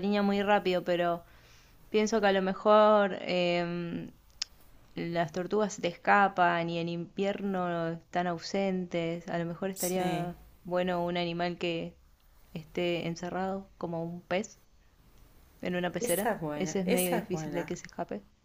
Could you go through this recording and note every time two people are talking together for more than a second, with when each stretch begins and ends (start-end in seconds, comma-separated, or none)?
16.0-17.7